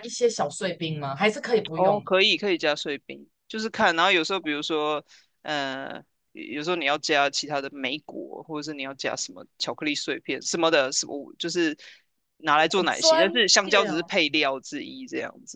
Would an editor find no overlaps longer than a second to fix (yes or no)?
no